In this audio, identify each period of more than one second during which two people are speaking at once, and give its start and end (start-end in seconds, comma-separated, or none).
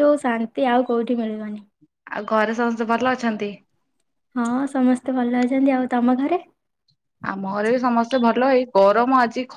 none